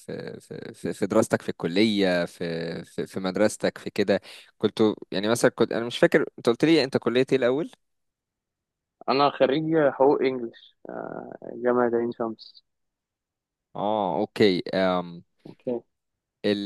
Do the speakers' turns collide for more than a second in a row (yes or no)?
no